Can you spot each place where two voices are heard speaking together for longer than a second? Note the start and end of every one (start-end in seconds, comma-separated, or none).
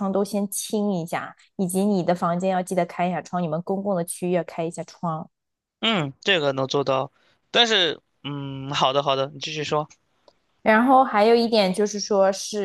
none